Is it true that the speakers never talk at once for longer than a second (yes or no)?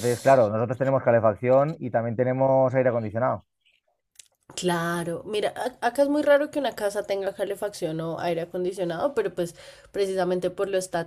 yes